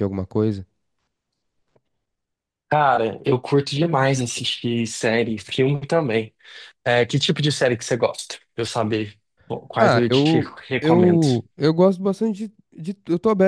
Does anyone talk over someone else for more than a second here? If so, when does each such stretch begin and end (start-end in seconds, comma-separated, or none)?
9.7-11.2